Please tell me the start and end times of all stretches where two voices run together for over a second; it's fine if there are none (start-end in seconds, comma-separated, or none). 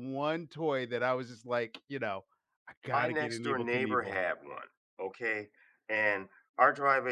2.9-4.2